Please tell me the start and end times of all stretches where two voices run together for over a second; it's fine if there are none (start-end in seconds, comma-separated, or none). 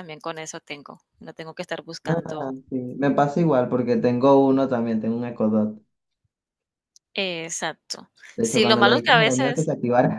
8.4-9.7